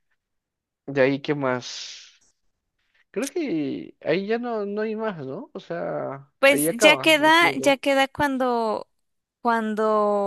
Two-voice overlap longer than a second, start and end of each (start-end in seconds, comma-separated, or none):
6.4-7.8